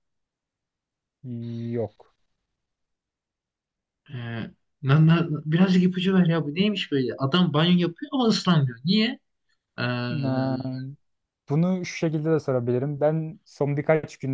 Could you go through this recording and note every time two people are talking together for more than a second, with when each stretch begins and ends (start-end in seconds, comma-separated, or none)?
none